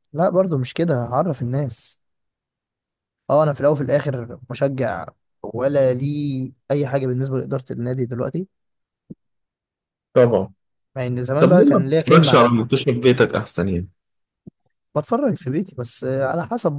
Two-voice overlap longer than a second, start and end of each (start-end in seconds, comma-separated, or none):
11.4-12.6